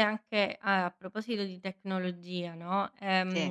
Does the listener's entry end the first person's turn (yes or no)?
no